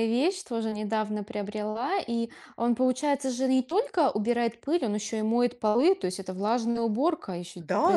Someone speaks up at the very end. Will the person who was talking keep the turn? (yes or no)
no